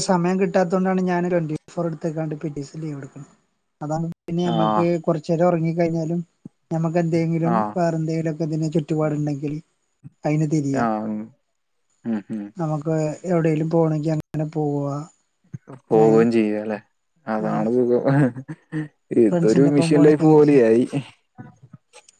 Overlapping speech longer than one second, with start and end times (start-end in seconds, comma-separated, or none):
19.3-20.6